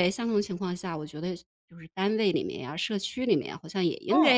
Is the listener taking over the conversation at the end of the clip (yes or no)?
no